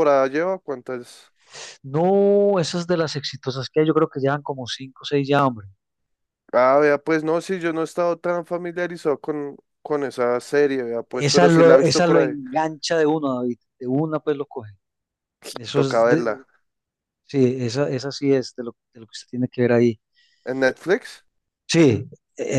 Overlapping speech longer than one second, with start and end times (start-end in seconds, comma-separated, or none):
11.1-12.3